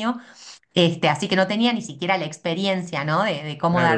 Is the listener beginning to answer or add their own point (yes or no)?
yes